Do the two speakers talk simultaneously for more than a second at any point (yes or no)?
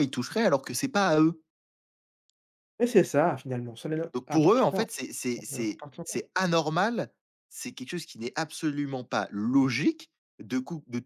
yes